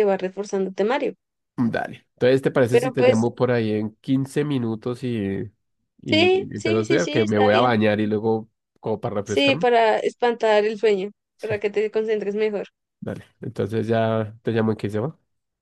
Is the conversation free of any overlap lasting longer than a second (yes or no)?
no